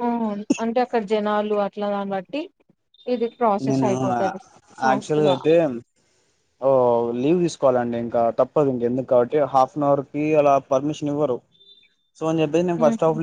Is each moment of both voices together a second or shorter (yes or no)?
yes